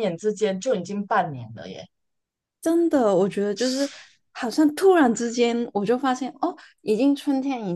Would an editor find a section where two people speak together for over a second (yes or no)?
no